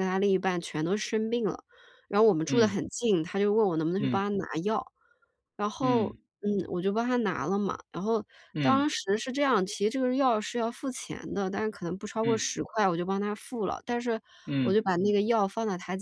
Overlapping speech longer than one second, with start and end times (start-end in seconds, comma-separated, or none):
none